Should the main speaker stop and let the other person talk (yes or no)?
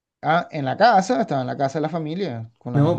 yes